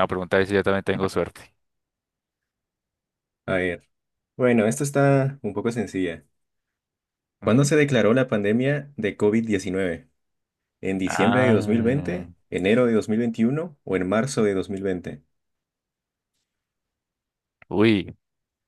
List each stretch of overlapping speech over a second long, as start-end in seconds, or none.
11.1-12.3